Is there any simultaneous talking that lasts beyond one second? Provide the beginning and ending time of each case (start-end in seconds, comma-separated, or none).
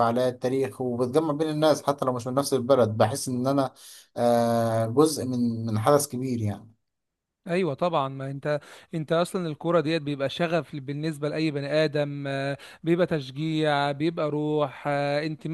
none